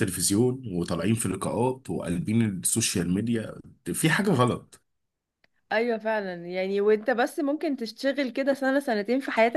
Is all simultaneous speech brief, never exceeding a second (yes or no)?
yes